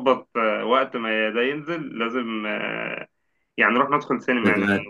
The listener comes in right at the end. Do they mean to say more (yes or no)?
no